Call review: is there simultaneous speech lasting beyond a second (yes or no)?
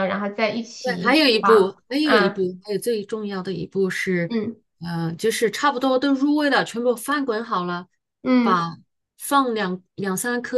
yes